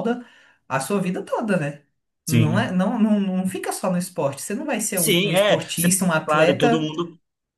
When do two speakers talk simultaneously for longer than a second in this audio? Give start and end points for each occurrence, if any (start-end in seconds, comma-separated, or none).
5.0-6.9